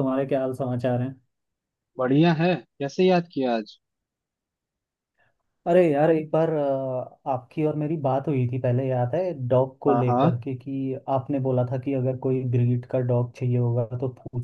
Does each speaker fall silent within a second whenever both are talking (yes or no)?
yes